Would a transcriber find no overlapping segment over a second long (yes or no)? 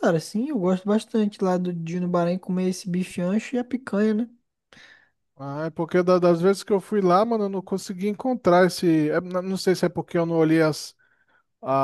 yes